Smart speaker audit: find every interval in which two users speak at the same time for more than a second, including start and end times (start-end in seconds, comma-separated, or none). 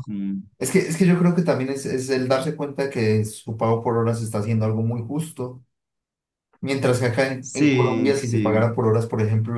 7.4-8.7